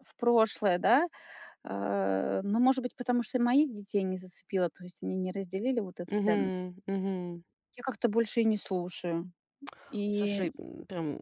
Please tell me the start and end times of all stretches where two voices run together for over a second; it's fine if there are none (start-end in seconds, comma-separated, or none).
none